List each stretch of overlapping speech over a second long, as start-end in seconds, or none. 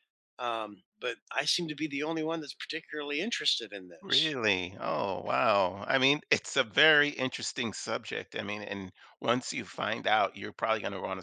none